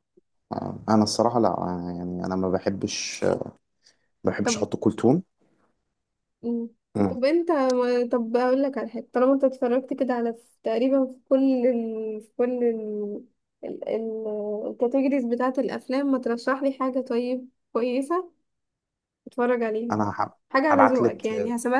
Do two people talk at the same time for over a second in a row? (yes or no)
no